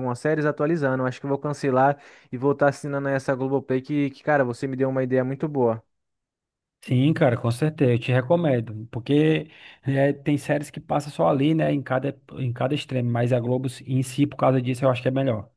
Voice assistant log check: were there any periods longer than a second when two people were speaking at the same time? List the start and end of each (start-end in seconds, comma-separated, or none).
none